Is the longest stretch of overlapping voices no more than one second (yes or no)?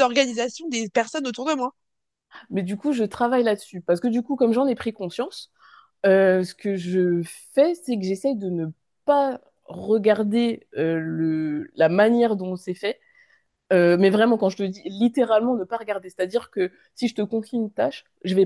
yes